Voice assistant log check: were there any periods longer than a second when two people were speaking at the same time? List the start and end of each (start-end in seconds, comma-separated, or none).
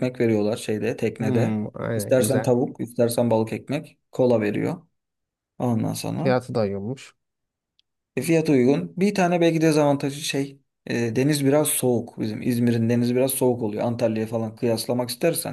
1.2-2.6